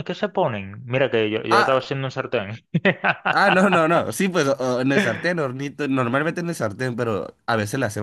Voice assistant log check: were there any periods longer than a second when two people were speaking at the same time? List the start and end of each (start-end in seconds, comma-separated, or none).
none